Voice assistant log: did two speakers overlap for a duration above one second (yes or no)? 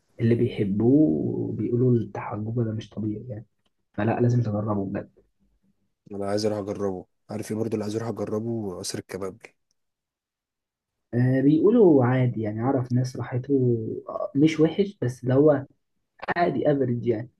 no